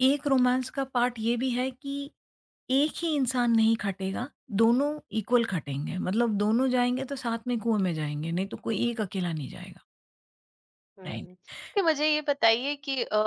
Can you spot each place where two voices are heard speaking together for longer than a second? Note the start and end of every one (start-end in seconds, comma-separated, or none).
none